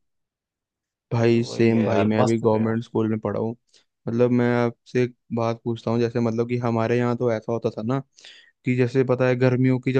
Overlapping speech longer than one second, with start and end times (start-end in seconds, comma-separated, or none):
1.3-2.8